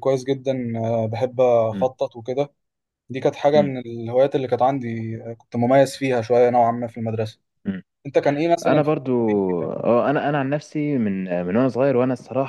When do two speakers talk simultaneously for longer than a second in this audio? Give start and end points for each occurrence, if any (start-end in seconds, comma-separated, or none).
none